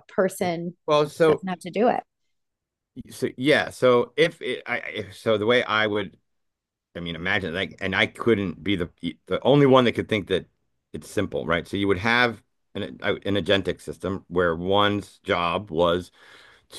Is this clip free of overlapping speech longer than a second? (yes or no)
yes